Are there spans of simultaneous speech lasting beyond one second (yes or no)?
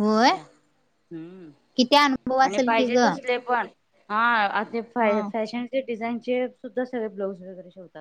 no